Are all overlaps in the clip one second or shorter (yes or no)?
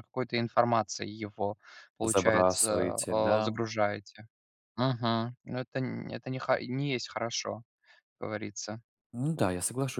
no